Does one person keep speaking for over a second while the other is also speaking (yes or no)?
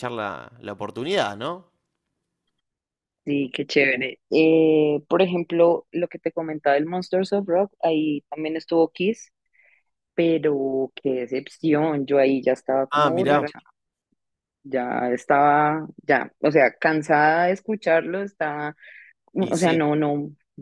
no